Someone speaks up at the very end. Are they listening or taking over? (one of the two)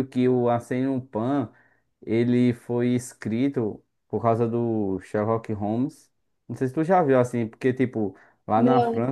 listening